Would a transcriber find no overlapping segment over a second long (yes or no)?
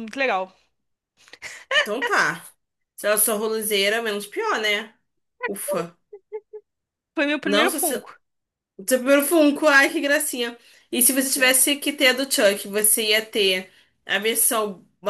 yes